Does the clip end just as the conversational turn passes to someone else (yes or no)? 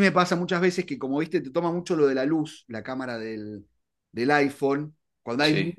no